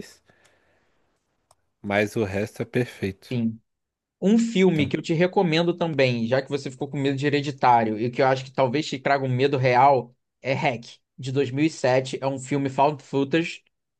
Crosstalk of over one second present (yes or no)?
no